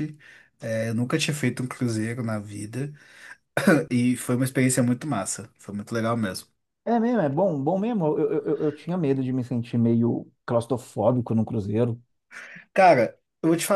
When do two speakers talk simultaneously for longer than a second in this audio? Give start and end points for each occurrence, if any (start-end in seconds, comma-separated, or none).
none